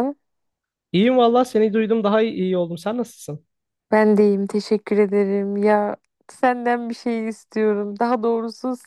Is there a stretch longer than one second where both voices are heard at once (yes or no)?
no